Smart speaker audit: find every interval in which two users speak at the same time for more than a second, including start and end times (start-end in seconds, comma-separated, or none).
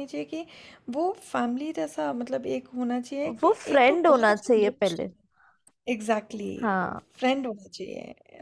3.4-5.1